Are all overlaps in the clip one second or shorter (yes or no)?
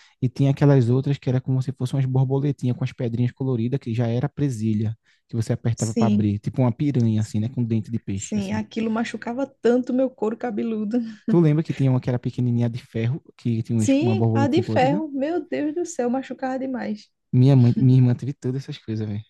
no